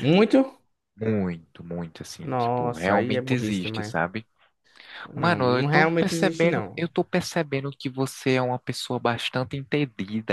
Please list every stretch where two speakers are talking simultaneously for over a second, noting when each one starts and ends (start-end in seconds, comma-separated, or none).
2.2-3.9, 5.2-6.8